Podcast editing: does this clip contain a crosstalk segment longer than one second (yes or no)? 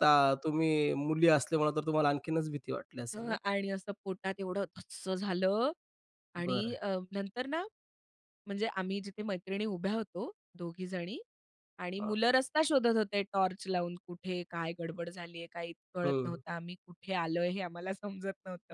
no